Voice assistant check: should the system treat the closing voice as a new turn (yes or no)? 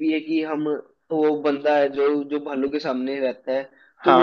no